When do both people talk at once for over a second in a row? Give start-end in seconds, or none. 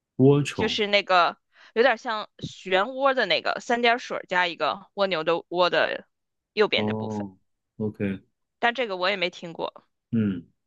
none